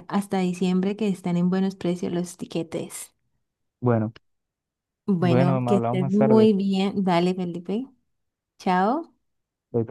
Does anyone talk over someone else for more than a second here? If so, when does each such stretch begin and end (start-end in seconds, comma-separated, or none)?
5.2-6.5